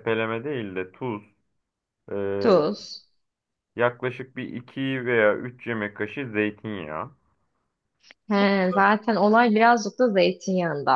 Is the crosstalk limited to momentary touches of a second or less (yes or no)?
yes